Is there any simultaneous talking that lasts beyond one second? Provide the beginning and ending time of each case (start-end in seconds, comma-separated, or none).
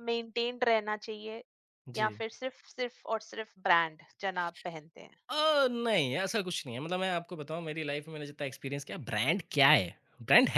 none